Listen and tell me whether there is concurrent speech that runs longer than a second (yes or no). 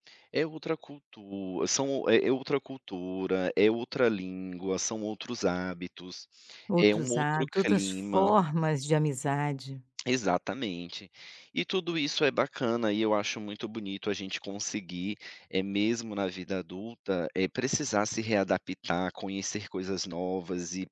yes